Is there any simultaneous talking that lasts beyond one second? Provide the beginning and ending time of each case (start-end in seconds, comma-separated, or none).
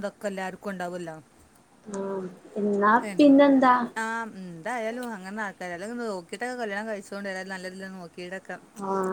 none